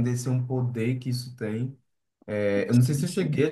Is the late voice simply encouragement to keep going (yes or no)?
yes